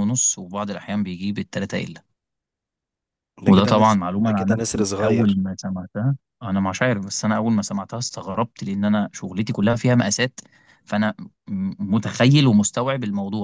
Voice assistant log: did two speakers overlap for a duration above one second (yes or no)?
yes